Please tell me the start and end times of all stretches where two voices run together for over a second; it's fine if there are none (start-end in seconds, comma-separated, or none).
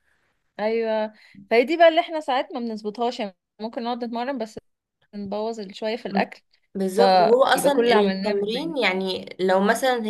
6.9-8.7